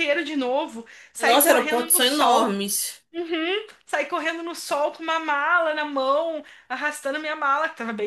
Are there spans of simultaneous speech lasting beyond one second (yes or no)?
yes